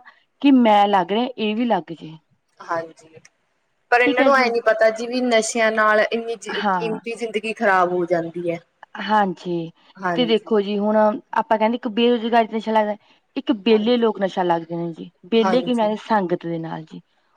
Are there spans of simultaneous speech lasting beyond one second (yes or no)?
no